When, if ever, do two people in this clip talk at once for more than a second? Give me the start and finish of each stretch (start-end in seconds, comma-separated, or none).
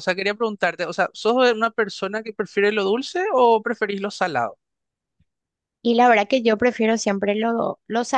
none